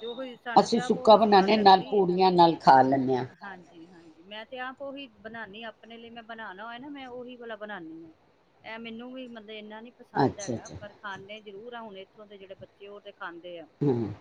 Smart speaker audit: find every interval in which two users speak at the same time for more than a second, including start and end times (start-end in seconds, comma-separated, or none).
0.6-2.0